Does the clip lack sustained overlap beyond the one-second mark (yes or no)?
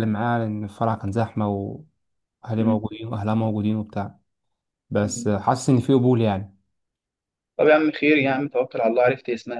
yes